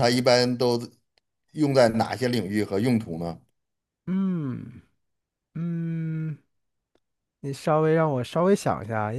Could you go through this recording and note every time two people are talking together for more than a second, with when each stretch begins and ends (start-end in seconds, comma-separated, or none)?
none